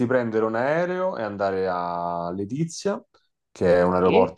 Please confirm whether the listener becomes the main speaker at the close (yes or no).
no